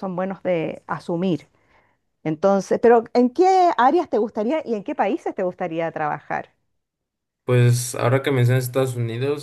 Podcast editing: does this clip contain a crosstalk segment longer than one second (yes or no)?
no